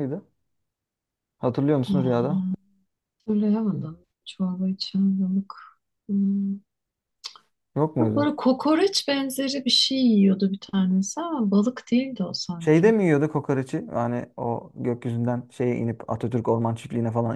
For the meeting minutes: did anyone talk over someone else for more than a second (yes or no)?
no